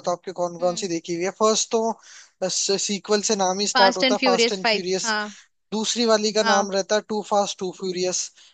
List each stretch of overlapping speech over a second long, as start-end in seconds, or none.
3.8-5.1